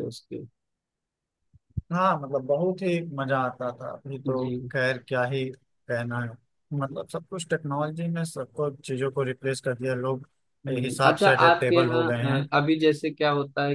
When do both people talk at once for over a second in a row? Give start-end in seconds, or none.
10.7-12.1